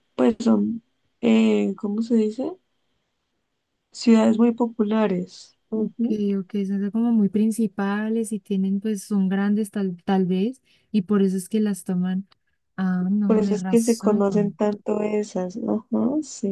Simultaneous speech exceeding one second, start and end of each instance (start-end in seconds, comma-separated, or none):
13.3-14.6